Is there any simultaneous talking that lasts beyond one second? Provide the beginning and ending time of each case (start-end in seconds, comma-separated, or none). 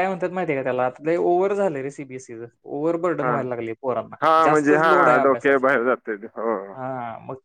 4.2-5.7